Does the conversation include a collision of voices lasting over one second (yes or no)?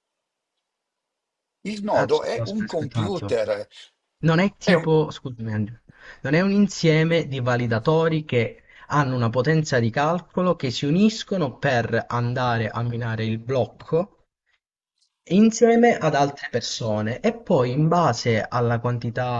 yes